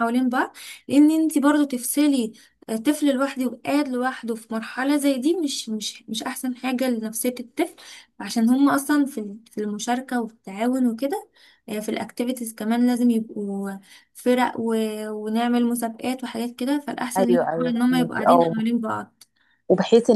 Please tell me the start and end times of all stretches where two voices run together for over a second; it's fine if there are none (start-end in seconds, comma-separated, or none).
17.2-18.6